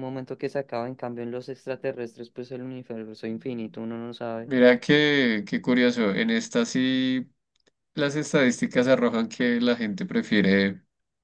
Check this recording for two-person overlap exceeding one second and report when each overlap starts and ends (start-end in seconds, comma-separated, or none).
none